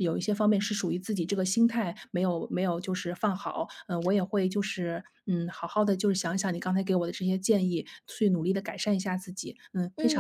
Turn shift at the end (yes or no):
yes